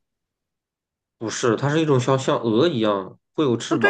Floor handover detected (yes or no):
yes